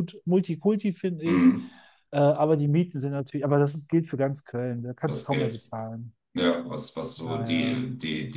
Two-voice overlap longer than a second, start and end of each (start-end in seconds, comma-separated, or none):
none